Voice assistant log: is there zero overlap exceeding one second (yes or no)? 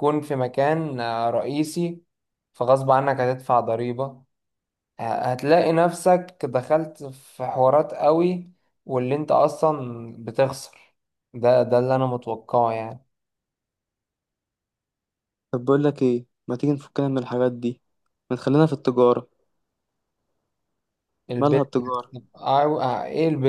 yes